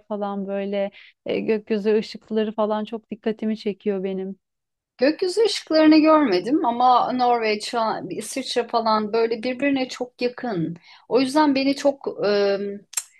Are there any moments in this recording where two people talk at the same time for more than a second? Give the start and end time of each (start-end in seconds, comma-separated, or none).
none